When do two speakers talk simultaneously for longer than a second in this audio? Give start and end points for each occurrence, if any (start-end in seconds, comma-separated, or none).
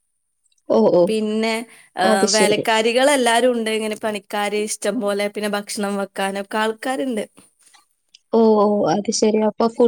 none